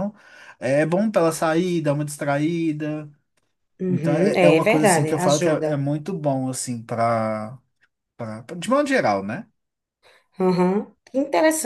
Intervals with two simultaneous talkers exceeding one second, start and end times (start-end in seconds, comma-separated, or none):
3.9-5.8